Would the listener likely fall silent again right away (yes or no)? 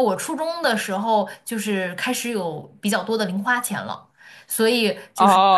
no